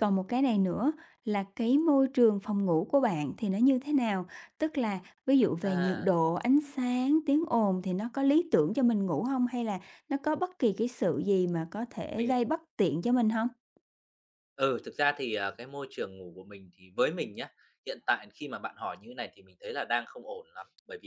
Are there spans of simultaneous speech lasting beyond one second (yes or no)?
no